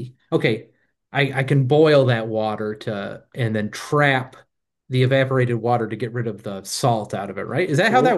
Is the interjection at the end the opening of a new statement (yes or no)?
yes